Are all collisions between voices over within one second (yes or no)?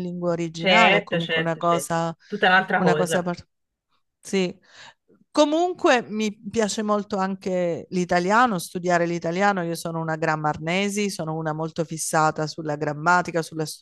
no